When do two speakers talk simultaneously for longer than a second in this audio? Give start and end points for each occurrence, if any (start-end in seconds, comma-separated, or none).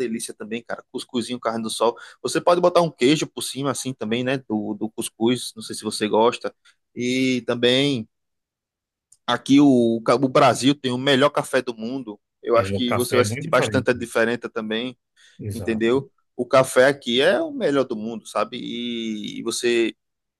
12.5-13.9